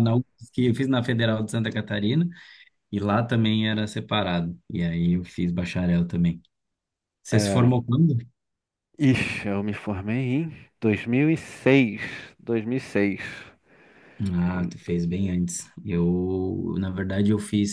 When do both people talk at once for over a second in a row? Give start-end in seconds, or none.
none